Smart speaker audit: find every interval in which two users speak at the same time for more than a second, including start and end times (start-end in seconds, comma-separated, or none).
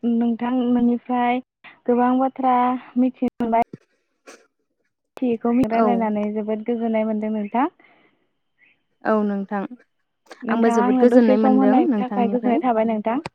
10.5-12.6